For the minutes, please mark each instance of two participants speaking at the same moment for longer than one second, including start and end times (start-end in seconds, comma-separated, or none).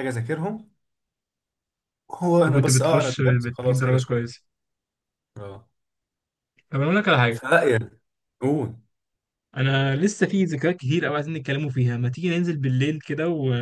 2.5-4.2